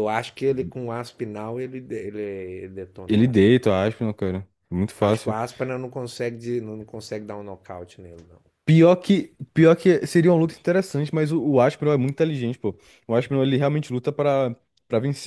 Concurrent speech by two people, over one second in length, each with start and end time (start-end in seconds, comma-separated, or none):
none